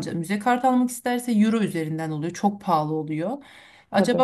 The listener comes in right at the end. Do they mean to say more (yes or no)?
no